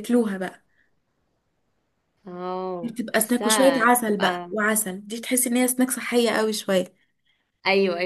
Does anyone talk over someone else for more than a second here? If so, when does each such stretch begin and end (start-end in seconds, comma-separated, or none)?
2.8-4.5